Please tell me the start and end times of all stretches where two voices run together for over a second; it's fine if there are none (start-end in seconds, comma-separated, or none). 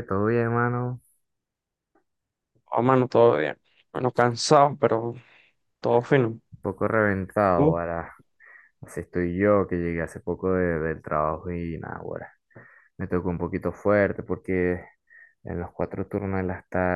none